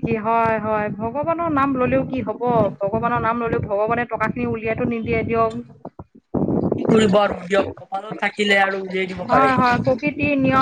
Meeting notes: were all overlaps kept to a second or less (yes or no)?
yes